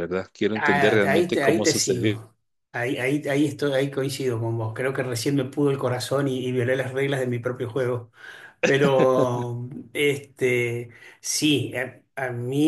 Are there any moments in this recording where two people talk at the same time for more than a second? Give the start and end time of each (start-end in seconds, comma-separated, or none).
0.5-2.2